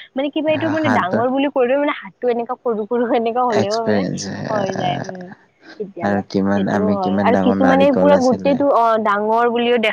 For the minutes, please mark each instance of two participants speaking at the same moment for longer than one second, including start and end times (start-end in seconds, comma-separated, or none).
6.0-8.5